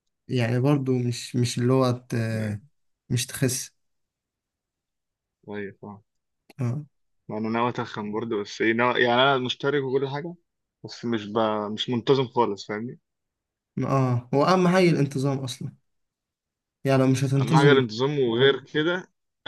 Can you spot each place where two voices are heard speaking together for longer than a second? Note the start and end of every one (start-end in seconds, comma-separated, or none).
none